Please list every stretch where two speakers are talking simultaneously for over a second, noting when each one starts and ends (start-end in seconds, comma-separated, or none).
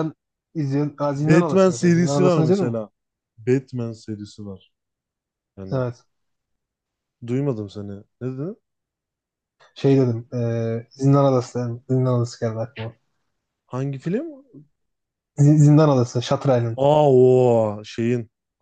1.1-2.8